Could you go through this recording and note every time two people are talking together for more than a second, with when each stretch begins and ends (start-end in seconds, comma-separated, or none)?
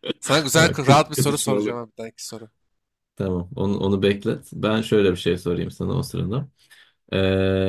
0.6-1.8